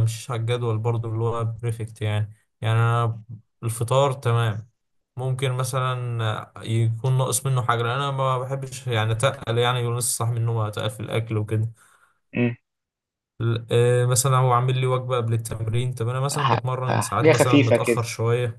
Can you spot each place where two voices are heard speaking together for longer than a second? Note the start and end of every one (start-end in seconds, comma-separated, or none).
16.3-18.0